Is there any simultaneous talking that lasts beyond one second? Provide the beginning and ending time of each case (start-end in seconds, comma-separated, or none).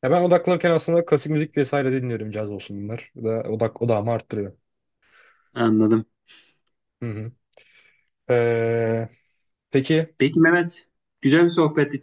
none